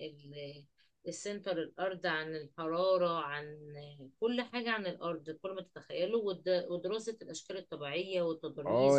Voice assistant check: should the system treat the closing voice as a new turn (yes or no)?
yes